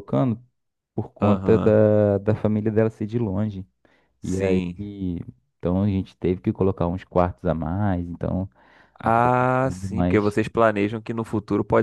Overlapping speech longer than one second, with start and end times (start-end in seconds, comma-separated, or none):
9.0-10.3